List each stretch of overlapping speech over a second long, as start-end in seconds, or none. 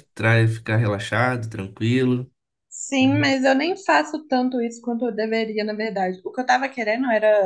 none